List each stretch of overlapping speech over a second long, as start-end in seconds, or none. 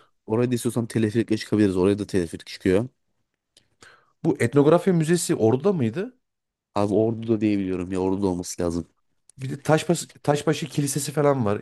none